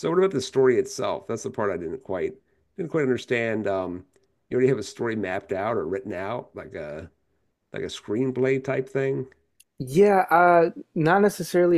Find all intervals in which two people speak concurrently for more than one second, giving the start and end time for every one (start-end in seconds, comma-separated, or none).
none